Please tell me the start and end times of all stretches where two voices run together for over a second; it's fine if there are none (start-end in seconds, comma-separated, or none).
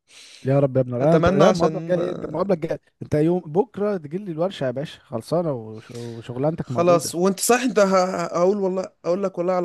1.0-2.6